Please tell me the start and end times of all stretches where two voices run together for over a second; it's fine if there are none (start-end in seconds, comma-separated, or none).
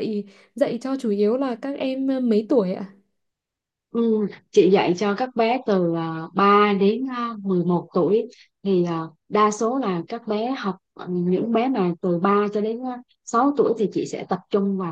none